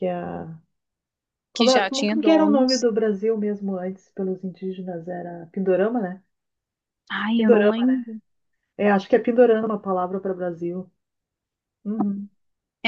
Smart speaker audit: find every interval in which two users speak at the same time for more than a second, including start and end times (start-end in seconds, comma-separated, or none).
1.6-2.9